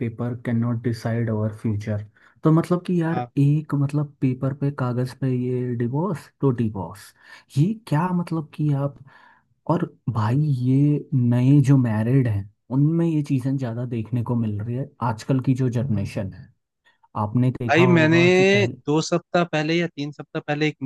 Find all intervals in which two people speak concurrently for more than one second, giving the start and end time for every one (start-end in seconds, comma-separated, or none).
none